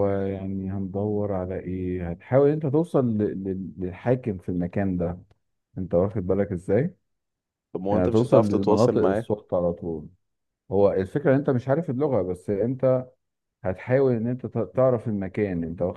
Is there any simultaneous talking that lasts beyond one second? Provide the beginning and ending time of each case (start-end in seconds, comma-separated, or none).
7.9-9.2